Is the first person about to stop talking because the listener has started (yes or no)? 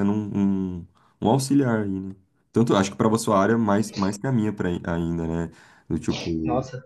no